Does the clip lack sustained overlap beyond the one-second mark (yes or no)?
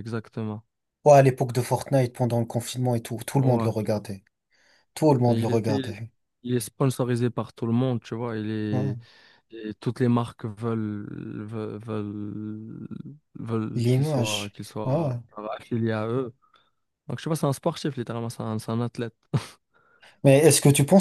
no